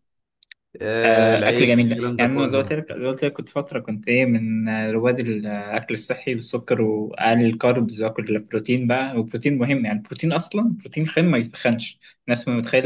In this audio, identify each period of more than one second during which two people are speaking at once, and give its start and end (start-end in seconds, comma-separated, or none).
1.1-2.8